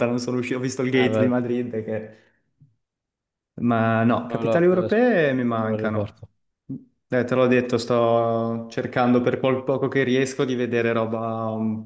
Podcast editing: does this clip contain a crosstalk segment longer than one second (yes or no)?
yes